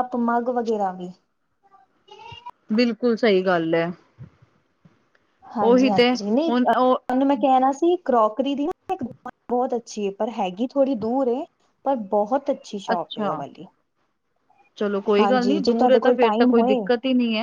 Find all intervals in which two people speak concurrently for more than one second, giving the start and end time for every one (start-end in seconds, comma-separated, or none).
15.2-16.8